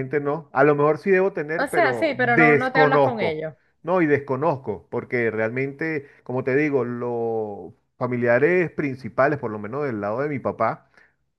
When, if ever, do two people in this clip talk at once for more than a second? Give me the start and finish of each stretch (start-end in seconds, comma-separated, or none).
1.6-3.4